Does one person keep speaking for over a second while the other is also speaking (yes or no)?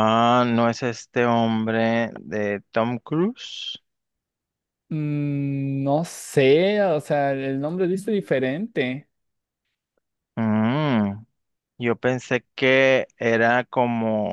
no